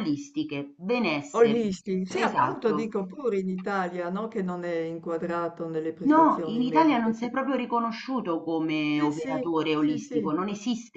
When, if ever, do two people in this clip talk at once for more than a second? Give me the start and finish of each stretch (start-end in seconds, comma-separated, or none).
1.4-2.9, 6.1-7.3, 8.9-10.3